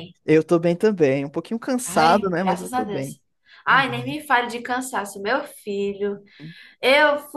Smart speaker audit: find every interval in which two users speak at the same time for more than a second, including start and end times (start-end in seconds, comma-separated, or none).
1.8-3.1